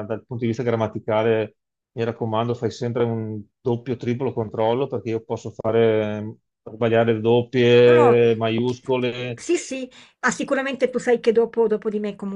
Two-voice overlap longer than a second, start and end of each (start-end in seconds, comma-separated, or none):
none